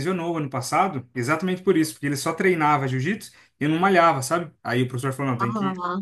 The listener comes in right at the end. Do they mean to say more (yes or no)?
no